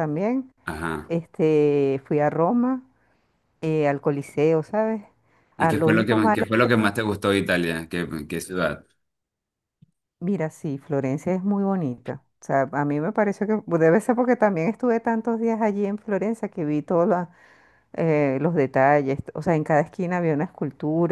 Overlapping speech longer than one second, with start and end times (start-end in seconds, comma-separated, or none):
5.6-6.9